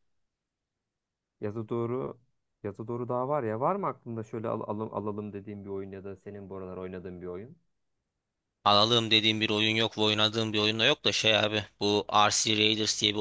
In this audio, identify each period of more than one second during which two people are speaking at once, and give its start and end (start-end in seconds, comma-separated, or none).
none